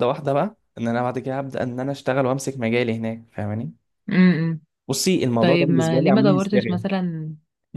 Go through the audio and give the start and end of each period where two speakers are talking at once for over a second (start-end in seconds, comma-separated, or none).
5.4-6.8